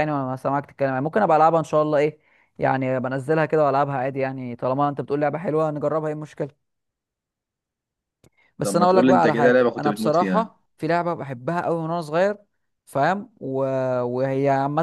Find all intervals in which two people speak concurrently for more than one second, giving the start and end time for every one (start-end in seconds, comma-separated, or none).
8.6-10.5